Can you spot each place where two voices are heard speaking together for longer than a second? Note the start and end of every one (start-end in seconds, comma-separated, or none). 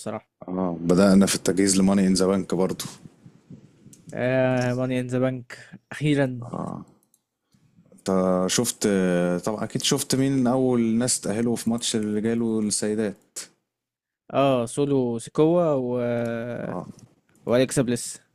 none